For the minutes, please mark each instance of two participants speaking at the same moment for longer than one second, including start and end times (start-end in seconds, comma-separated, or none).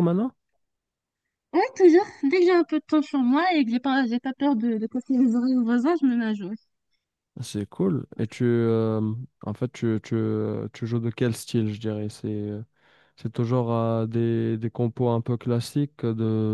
none